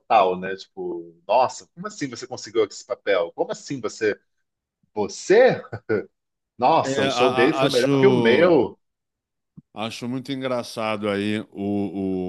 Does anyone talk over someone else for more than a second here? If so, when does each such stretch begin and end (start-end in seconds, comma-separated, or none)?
6.8-8.6